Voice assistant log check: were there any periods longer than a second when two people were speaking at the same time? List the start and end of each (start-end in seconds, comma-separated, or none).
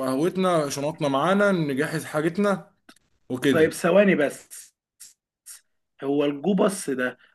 none